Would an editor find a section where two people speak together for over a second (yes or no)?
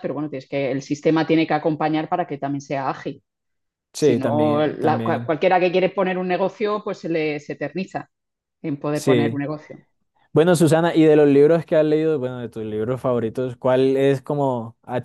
yes